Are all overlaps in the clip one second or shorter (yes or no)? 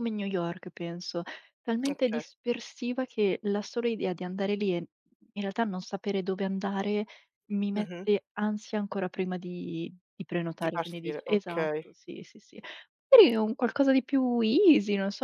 no